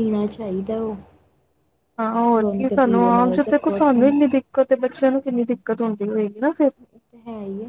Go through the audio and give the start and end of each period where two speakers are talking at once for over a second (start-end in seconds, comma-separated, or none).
2.4-4.1